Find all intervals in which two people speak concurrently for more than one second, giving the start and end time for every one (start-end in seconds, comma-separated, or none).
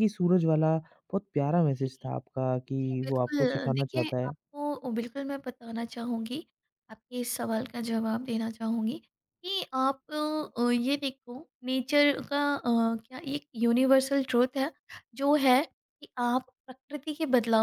2.8-4.3